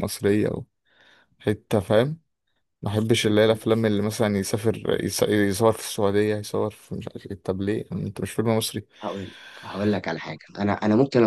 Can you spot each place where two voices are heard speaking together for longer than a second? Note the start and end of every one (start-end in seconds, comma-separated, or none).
none